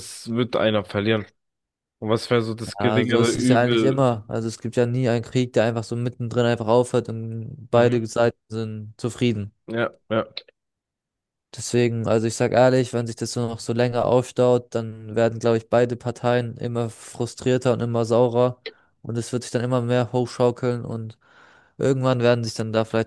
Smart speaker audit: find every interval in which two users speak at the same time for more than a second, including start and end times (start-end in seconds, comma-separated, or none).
2.8-4.1